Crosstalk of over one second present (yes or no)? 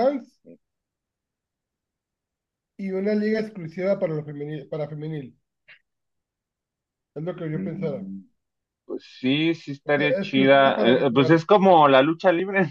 yes